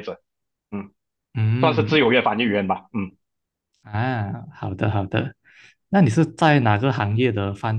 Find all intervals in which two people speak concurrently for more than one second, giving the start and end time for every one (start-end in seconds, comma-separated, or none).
none